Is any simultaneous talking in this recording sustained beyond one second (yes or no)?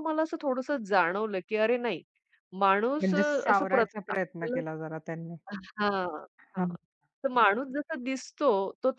yes